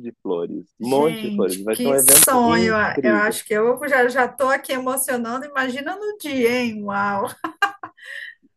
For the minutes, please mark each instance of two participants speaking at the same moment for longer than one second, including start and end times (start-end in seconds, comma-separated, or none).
0.8-3.4